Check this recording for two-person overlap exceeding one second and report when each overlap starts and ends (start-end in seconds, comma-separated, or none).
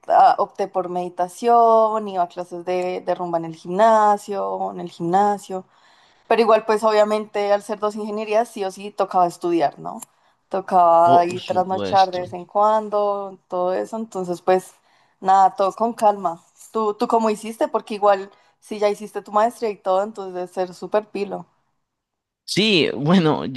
11.0-12.4